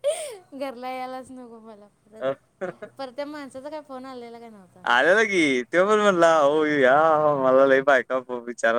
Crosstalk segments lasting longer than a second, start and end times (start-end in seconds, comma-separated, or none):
none